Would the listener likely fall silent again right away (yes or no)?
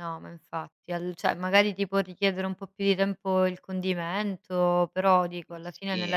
yes